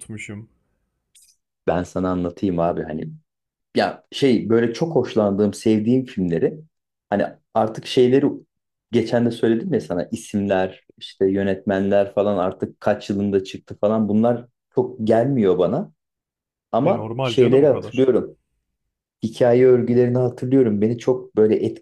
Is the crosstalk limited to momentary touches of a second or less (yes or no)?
no